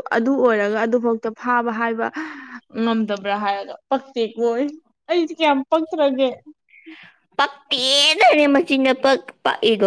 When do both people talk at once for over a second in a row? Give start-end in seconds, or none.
none